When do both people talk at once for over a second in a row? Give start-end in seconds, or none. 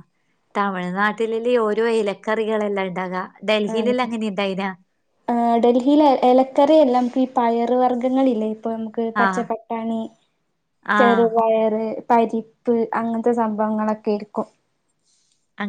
none